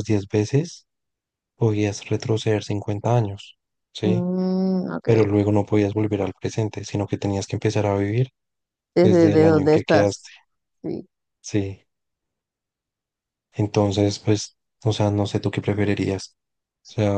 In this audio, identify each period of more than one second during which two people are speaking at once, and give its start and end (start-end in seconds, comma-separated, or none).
9.0-10.3